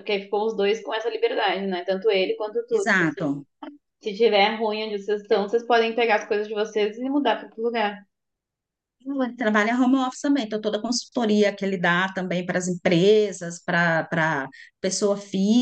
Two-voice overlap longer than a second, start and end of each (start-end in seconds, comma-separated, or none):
none